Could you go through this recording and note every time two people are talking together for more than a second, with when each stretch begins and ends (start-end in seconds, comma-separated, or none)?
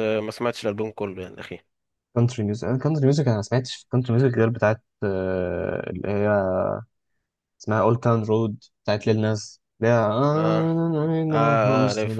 none